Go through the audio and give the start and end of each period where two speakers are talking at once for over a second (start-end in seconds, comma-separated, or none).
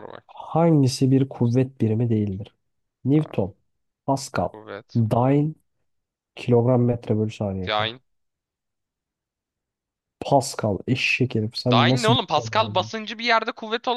11.7-12.9